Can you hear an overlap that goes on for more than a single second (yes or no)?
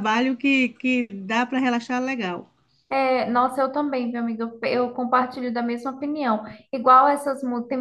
no